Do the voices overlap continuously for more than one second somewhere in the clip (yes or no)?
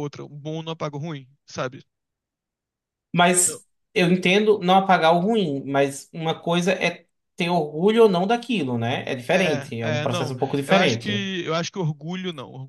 yes